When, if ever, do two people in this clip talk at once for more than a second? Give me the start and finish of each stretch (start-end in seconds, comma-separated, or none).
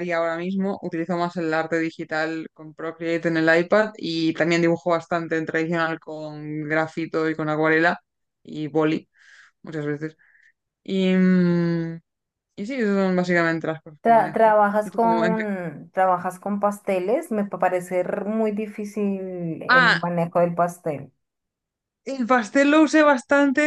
14.0-15.4